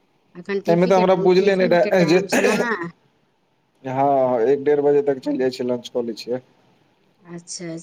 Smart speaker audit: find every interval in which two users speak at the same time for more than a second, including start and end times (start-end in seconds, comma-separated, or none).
0.5-2.2